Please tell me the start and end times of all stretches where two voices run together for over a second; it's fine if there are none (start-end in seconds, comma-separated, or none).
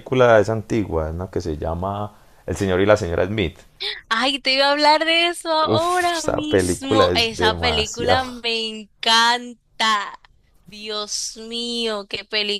5.6-8.2